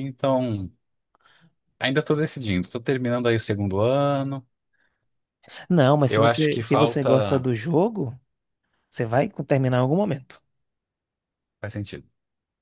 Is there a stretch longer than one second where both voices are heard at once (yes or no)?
yes